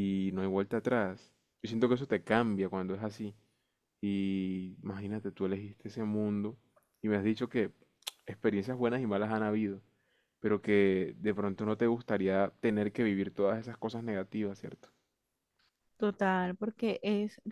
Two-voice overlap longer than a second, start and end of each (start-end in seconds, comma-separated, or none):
none